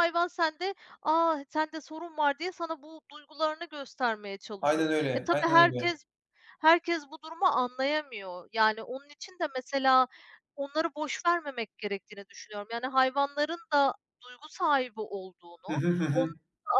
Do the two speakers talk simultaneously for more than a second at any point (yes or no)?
yes